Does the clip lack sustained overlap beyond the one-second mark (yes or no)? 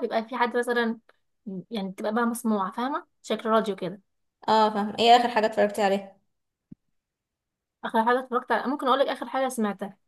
yes